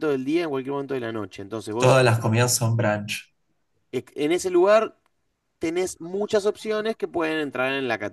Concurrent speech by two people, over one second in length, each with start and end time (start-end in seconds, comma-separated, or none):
none